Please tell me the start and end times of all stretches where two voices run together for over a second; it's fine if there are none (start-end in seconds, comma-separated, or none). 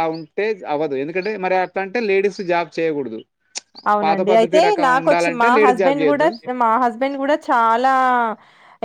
4.0-6.3